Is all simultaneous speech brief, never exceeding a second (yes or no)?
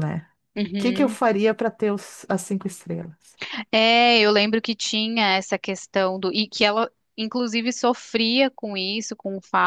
yes